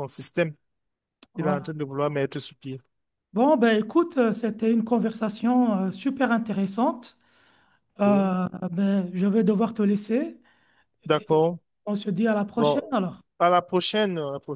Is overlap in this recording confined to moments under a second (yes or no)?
yes